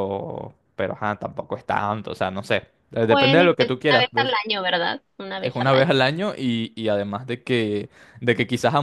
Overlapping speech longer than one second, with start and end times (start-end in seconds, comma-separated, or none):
3.1-4.3